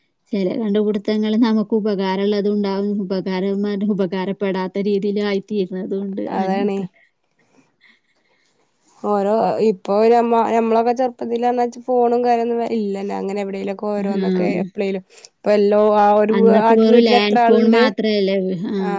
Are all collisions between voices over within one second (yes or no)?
yes